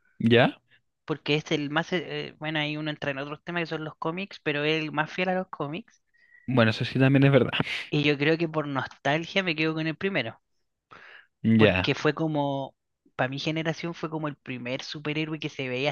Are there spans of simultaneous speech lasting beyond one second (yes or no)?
no